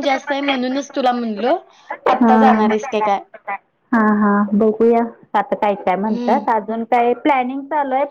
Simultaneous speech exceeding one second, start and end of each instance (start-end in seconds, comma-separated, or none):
none